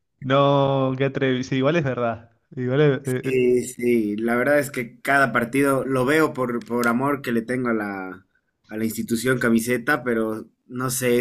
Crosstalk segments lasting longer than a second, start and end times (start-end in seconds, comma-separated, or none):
none